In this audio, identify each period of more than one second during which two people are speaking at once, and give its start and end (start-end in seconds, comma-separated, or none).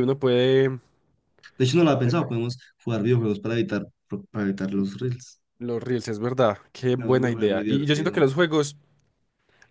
7.0-8.2